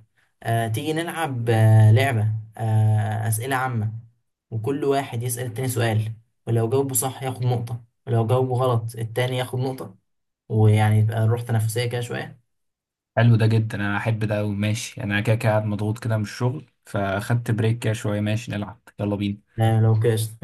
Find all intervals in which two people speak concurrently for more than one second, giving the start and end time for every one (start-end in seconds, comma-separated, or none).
none